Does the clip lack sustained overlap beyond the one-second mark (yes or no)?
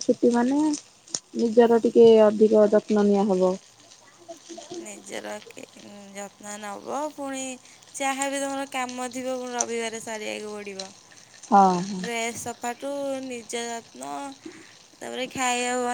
yes